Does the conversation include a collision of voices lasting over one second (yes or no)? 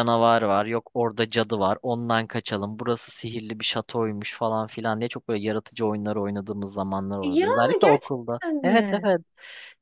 yes